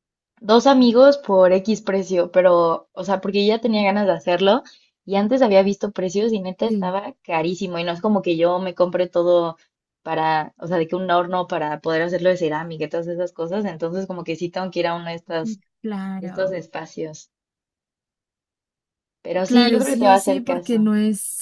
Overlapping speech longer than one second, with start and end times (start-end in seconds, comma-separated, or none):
19.4-20.9